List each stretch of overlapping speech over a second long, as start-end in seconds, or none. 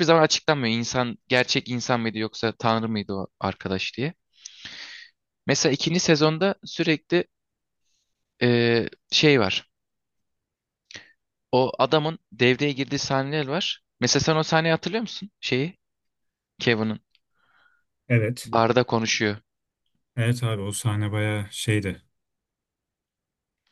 none